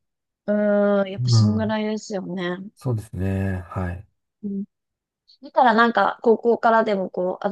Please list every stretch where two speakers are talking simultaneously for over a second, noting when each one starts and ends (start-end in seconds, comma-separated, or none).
none